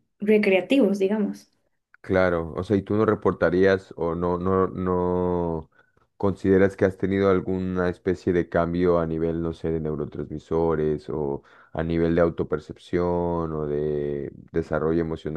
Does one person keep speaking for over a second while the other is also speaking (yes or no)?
no